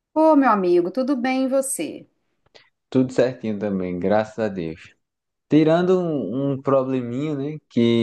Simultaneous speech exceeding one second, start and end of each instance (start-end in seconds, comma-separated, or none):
none